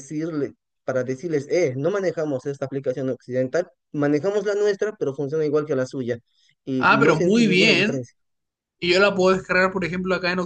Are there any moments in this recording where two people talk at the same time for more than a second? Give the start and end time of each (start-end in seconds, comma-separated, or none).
6.8-8.1